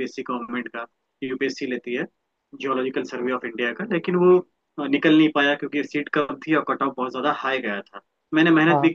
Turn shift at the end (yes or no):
no